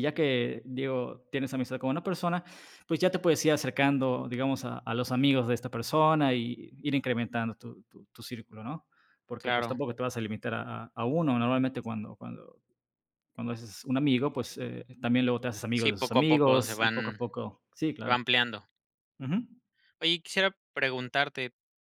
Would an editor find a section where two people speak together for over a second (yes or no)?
yes